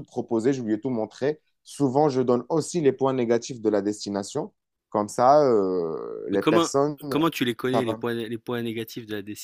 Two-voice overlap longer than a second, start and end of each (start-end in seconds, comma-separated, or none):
none